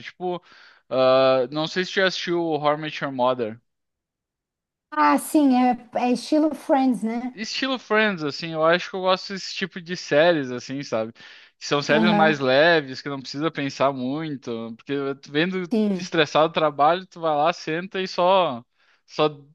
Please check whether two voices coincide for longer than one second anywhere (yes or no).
no